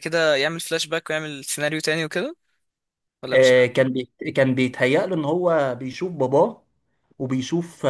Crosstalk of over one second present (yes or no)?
no